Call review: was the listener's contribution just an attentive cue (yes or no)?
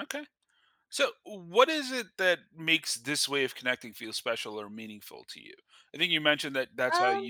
yes